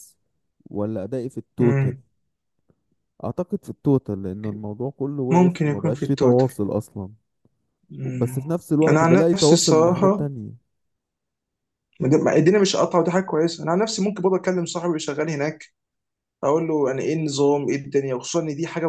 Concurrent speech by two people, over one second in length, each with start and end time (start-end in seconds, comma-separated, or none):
5.3-6.5, 8.1-10.3